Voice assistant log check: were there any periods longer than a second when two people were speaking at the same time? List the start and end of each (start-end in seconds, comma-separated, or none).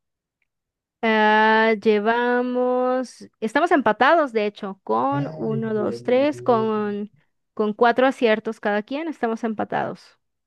5.1-6.7